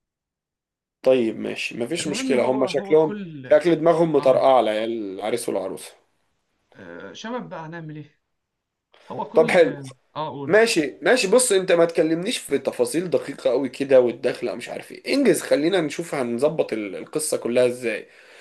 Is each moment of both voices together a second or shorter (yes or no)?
no